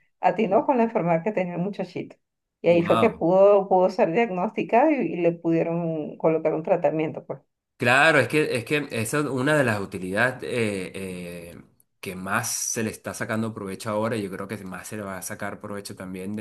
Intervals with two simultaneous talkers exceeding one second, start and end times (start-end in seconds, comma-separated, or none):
none